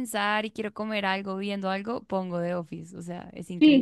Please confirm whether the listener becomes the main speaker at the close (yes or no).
yes